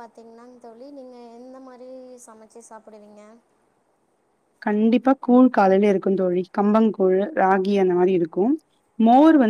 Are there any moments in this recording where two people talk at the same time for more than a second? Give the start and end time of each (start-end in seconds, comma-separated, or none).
none